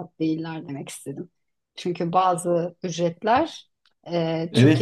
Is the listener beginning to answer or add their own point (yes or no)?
yes